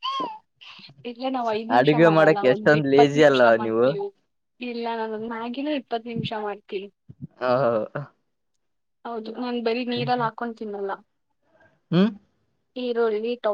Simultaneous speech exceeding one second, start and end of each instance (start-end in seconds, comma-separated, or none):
1.8-3.9